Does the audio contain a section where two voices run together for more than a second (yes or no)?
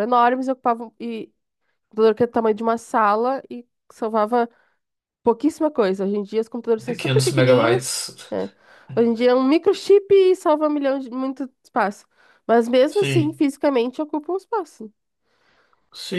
yes